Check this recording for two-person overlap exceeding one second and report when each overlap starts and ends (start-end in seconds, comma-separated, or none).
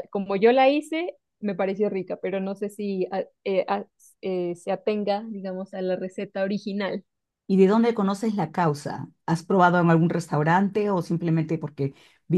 none